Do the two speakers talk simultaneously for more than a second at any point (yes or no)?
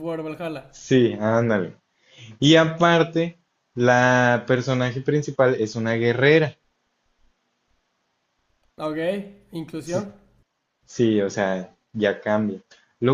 no